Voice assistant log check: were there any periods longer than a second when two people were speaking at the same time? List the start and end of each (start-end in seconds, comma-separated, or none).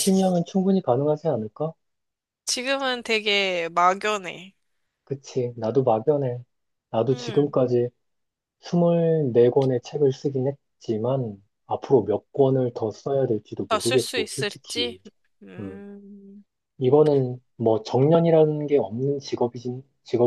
13.7-15.0